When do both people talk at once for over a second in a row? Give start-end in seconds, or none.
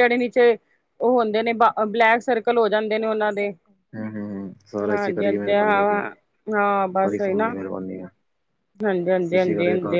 none